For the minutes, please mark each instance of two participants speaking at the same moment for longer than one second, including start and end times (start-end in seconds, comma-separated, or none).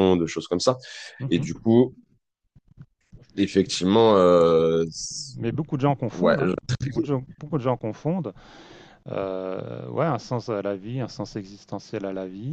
none